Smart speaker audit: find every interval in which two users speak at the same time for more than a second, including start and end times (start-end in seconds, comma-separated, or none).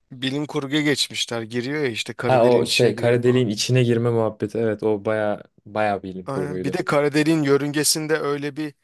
2.2-3.5